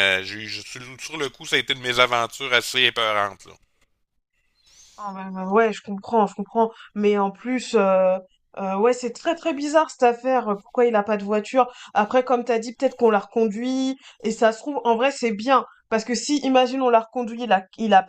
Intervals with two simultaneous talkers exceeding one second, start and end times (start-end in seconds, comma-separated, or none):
none